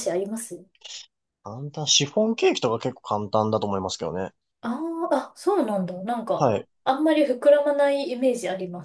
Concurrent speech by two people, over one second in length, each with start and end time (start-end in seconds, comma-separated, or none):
none